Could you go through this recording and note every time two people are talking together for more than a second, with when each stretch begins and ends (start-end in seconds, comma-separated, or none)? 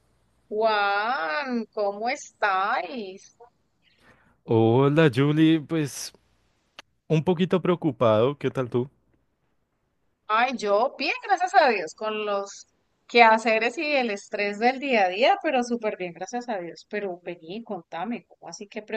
none